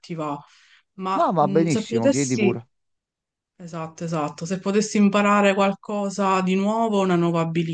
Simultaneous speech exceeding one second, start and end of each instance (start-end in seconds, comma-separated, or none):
1.1-2.5